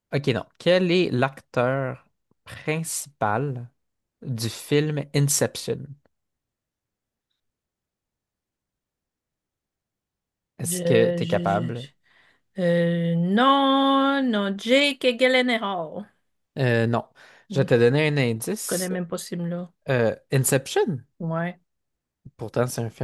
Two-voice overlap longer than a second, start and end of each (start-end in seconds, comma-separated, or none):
10.6-11.9